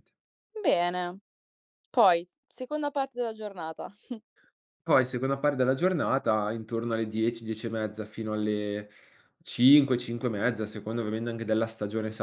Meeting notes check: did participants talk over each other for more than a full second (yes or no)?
no